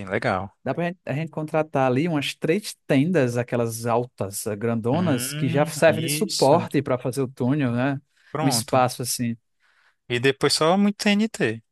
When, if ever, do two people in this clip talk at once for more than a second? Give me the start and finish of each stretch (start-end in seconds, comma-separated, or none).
4.9-6.7